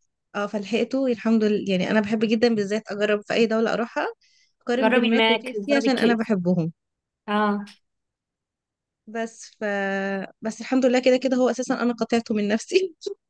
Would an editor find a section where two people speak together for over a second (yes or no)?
yes